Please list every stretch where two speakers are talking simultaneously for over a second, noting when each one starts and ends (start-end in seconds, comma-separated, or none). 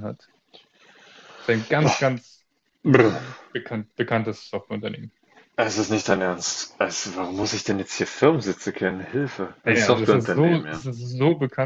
9.6-10.8